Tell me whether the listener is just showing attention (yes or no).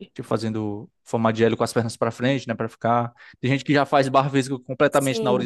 yes